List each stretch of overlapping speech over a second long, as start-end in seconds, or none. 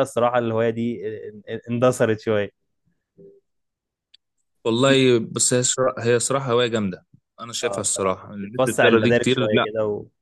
7.6-9.7